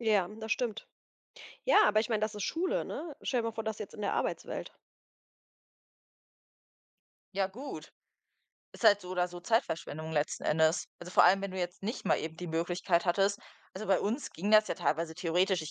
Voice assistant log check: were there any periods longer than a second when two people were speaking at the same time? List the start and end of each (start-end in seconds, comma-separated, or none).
none